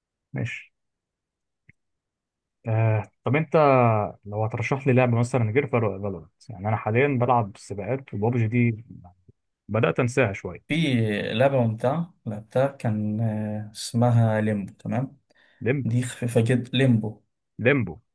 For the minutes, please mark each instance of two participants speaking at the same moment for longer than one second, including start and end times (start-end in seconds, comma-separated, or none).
none